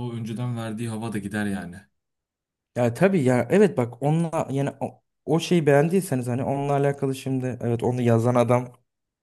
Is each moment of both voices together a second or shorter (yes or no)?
yes